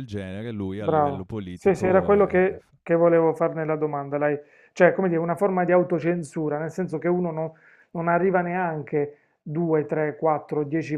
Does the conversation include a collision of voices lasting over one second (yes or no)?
yes